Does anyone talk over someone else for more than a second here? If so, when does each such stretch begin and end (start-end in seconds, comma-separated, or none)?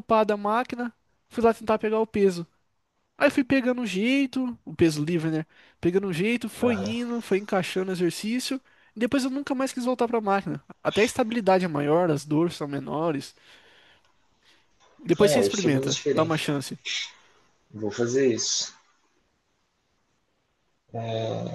15.2-16.4